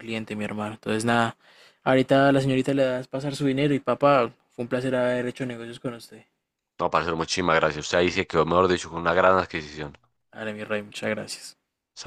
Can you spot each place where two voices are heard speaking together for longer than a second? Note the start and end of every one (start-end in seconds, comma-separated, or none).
none